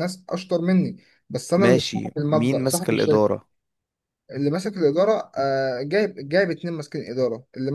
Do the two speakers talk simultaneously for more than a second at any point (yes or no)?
yes